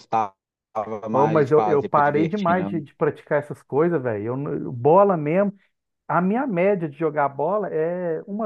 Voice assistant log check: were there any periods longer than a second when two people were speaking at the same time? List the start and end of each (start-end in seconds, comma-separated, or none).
1.1-2.8